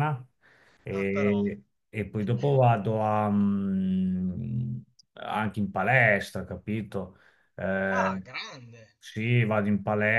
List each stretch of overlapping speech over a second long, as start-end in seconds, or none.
none